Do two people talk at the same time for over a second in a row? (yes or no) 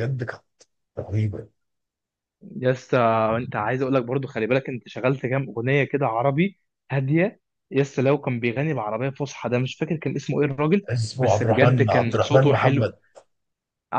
yes